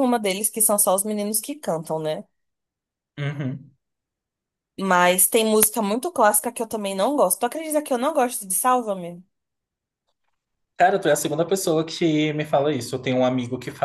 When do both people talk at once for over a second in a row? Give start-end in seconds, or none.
none